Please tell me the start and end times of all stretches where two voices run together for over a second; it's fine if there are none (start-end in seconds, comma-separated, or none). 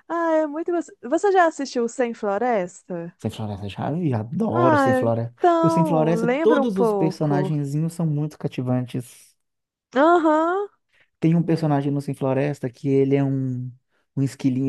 4.5-7.5